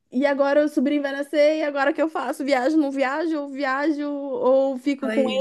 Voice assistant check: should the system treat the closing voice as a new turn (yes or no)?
no